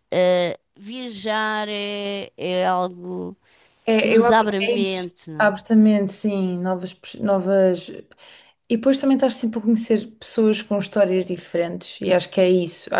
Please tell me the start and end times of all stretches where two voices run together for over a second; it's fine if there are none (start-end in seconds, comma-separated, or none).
4.0-5.5